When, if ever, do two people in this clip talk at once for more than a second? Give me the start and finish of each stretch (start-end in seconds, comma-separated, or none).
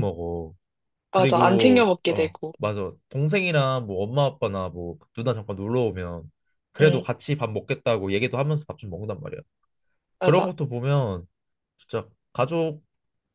1.1-2.5